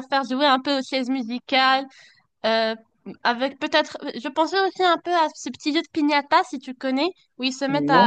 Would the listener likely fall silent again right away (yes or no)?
yes